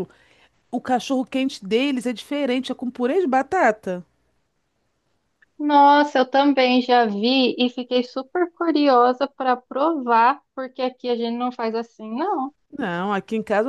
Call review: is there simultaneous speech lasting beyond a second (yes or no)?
no